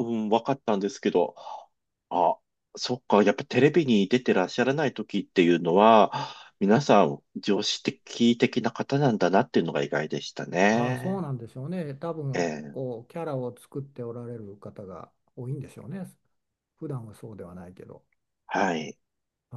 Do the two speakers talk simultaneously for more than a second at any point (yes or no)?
no